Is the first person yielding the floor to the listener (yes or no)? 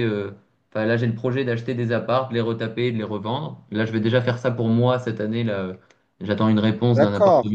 yes